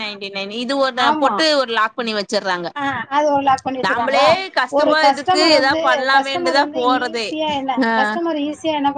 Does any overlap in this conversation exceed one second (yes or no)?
yes